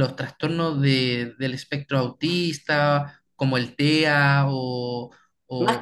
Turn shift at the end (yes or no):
yes